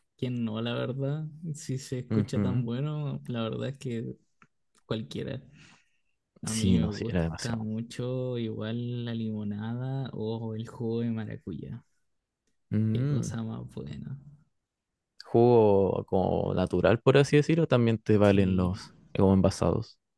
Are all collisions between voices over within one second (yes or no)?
no